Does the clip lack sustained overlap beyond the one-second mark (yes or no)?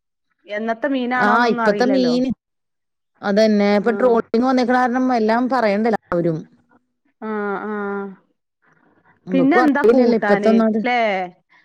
no